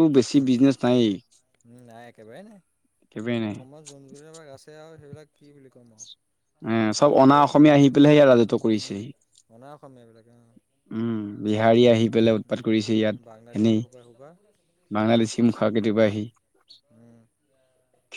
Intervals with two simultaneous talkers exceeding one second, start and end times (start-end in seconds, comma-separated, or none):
12.5-13.8